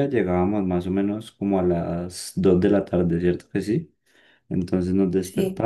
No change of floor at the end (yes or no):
yes